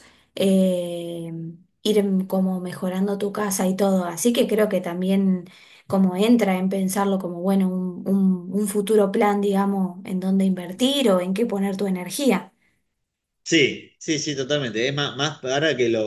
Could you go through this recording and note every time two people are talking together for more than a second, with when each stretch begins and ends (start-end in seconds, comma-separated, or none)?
none